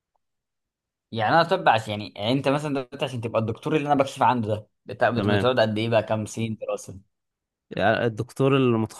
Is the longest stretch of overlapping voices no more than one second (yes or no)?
yes